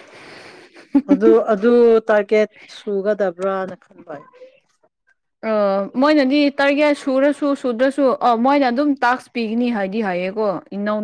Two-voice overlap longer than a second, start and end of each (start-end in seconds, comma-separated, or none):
none